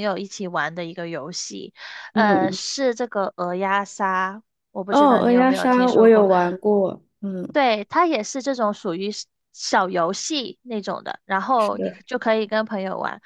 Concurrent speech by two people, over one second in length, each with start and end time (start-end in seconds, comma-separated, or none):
4.9-6.3